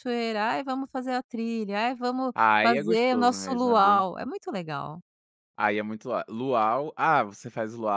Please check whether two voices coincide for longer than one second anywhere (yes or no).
yes